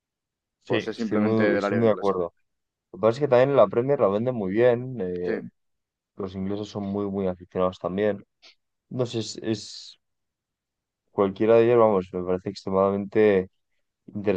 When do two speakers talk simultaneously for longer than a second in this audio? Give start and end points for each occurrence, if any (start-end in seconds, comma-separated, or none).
0.7-2.2